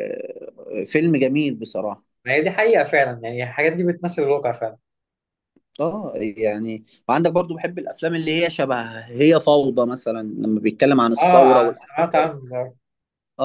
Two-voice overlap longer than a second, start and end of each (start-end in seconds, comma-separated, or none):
11.2-12.4